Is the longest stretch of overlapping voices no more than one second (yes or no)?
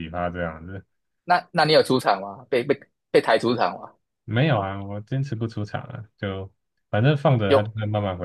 yes